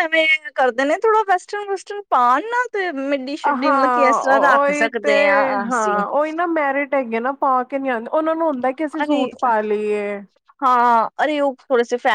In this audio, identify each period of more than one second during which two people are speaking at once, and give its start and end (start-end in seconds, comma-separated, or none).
3.4-5.1